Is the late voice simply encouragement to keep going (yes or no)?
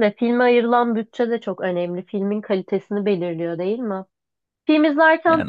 yes